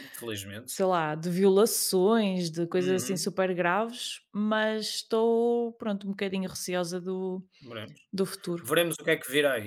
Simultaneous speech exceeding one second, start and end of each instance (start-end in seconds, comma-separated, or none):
none